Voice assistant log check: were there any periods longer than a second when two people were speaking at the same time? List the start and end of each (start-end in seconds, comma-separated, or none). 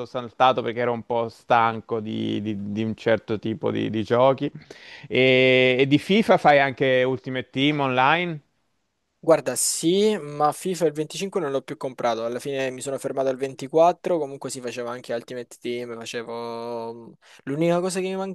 none